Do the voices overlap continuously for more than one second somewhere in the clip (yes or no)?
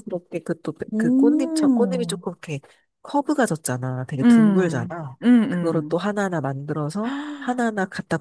yes